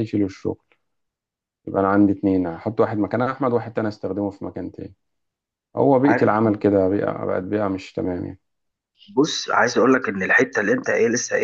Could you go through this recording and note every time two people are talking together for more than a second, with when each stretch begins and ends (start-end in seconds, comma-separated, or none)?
none